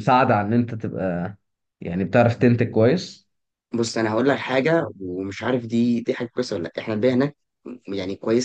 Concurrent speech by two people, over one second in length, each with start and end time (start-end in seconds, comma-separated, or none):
none